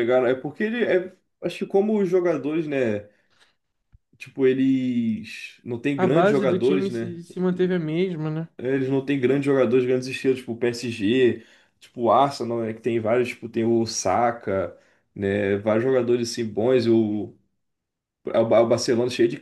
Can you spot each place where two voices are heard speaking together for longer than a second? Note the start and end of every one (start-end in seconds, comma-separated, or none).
6.0-7.2